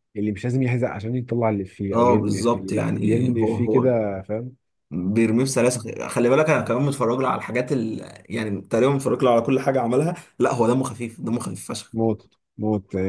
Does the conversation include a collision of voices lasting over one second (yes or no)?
yes